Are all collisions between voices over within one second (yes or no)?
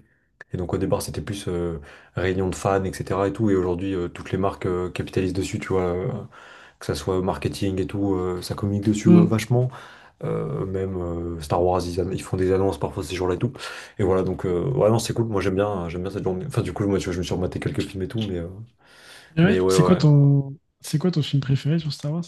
yes